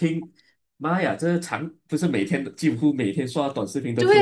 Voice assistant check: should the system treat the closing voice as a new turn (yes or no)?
yes